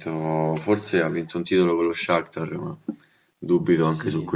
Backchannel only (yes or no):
no